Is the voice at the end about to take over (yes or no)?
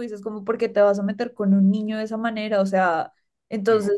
no